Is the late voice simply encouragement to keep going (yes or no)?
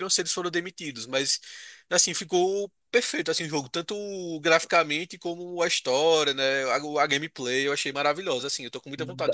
no